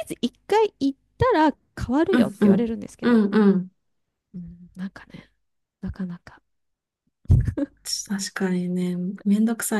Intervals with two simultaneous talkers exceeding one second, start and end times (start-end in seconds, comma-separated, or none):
none